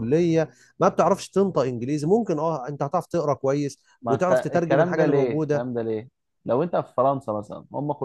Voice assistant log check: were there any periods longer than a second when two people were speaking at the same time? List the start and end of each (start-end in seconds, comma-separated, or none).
4.0-5.7